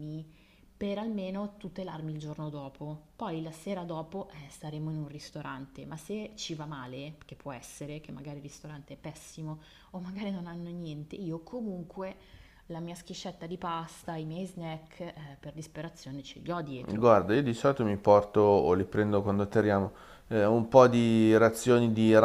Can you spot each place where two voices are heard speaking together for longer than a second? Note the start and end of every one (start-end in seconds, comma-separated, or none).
none